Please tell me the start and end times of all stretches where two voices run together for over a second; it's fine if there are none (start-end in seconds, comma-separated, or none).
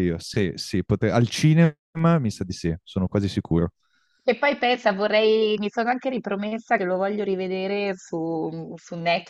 none